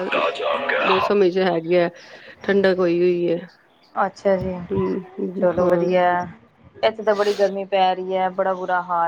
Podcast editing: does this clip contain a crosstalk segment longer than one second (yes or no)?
no